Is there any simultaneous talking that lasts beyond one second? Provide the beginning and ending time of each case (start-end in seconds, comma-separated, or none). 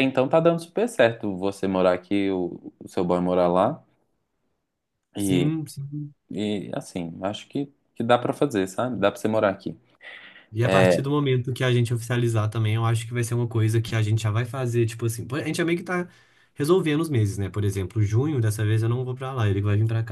none